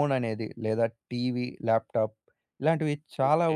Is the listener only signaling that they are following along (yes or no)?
yes